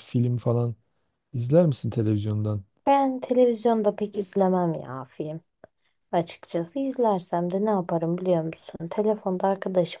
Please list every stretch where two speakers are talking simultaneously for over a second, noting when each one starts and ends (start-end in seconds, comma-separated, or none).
none